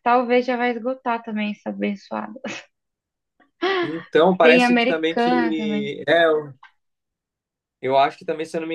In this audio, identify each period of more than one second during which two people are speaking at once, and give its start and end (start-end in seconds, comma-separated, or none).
4.4-5.9